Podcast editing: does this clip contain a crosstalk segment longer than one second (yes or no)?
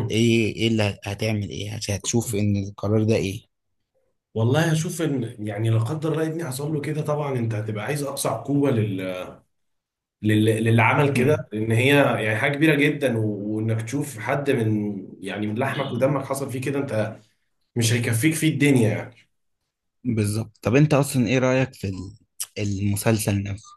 no